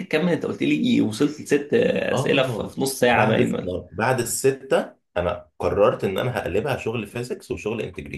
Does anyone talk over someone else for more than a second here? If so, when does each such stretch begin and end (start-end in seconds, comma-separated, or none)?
2.1-3.5